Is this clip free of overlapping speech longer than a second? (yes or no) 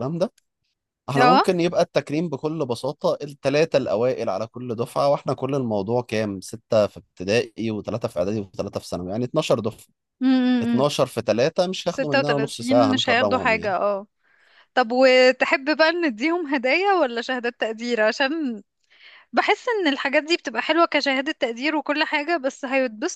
no